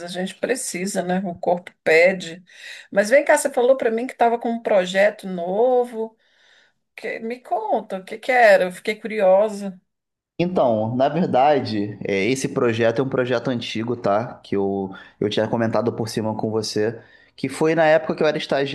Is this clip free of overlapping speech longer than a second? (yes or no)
yes